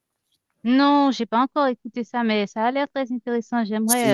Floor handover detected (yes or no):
yes